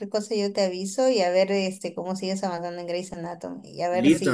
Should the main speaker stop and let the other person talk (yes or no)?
yes